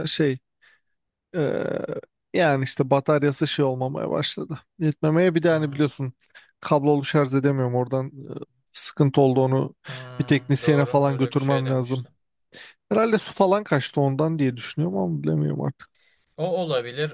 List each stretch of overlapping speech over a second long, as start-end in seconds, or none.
10.6-12.1